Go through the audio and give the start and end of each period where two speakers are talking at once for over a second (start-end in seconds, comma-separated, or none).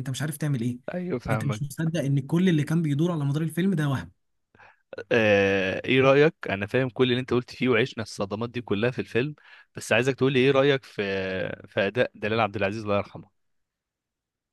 none